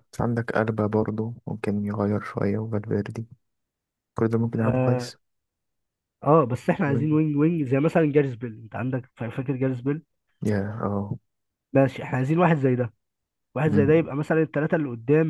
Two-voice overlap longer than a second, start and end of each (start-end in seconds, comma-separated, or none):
none